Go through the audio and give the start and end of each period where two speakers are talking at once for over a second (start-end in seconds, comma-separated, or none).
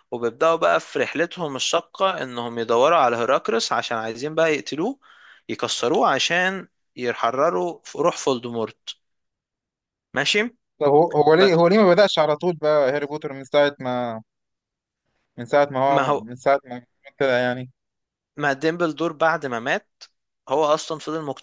none